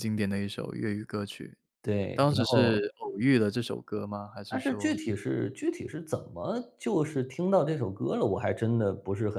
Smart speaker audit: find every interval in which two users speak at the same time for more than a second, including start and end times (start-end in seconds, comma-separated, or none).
none